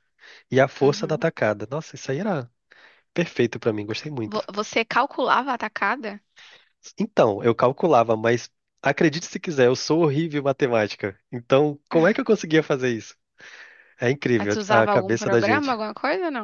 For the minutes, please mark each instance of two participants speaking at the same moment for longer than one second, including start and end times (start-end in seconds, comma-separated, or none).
14.4-15.8